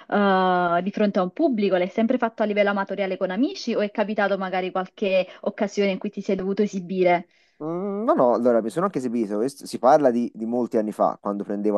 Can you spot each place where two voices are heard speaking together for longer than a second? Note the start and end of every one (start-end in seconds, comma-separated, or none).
none